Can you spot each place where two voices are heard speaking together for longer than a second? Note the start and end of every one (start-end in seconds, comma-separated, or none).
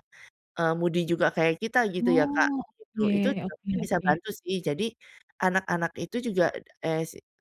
2.0-4.1